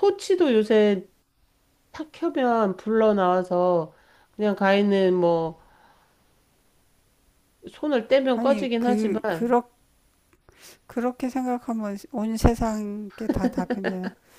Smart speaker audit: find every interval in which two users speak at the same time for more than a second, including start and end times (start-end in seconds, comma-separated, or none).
8.3-9.6